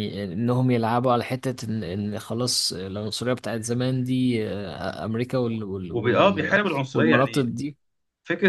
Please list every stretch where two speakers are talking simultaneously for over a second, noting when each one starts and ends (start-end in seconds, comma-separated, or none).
5.9-7.5